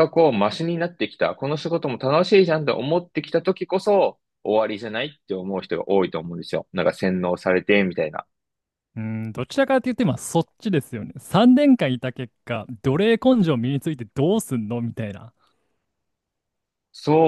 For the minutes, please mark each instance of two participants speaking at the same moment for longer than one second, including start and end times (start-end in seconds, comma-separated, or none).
none